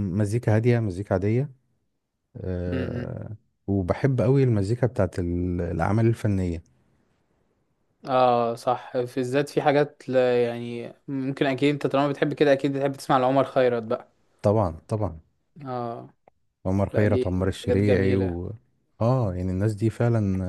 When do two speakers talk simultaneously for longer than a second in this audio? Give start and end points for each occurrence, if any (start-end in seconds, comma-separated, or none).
16.9-18.4